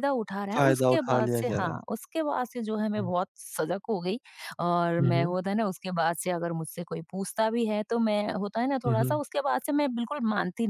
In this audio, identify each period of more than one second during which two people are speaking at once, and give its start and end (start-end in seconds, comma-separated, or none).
0.5-1.8